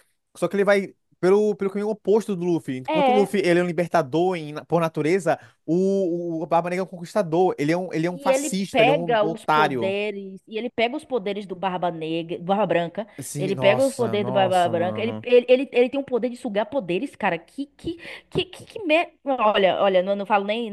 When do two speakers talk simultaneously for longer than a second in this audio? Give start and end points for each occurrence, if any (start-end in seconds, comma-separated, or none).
8.1-9.9, 13.2-15.2